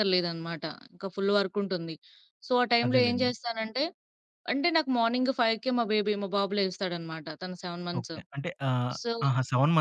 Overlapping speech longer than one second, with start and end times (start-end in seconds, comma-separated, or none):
none